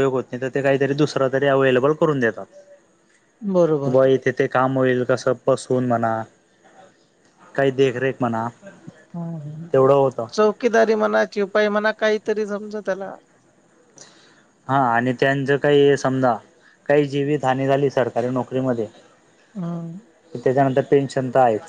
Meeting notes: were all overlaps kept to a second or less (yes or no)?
yes